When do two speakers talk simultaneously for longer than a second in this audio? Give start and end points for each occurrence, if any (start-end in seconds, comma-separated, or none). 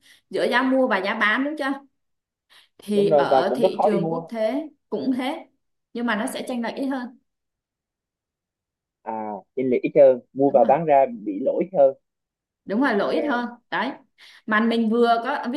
2.9-4.2